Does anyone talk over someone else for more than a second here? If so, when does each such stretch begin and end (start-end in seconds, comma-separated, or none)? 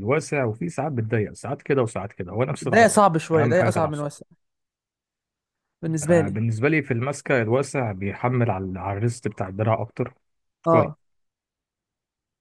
2.6-4.1